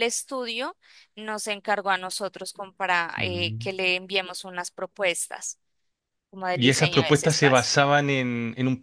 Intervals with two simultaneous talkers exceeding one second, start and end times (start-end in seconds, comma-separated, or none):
6.5-7.8